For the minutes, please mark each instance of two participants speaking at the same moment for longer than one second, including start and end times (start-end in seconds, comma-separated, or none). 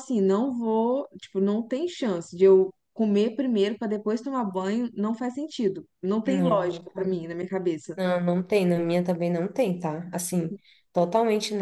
none